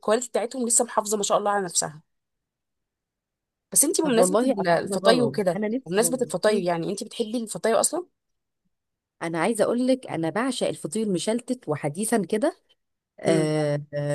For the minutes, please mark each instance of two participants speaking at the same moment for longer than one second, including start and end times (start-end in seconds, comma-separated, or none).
4.0-6.2